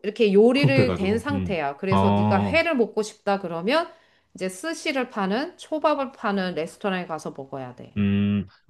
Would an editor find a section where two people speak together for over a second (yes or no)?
yes